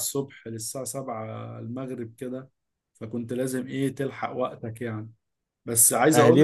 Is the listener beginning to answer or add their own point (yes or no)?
yes